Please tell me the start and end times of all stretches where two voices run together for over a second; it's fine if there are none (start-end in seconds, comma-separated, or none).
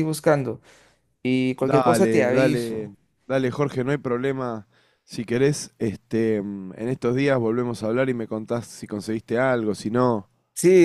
1.6-2.9